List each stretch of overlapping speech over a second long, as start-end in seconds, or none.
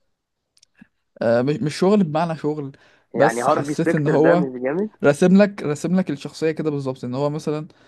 3.1-4.5